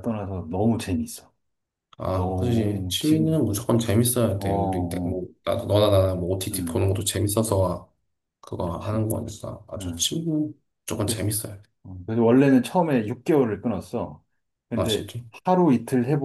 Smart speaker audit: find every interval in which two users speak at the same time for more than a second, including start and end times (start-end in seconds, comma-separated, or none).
2.1-3.5